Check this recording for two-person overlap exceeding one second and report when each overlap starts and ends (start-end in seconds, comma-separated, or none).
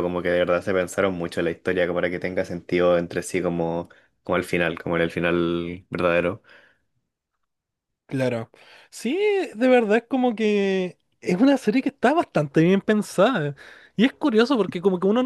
none